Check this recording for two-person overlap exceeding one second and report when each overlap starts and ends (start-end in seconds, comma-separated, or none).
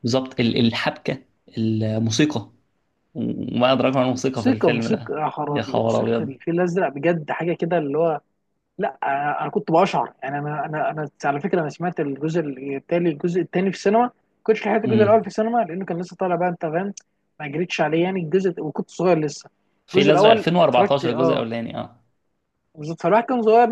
4.4-6.4, 19.9-21.4